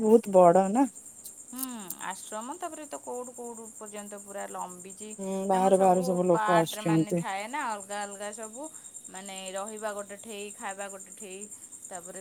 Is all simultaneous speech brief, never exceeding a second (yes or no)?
no